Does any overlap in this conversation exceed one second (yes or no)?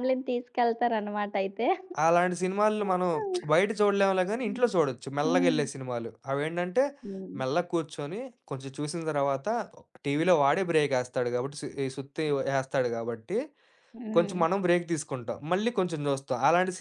no